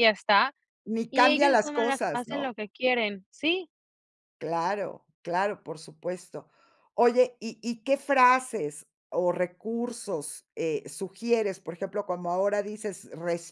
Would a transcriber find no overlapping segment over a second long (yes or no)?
no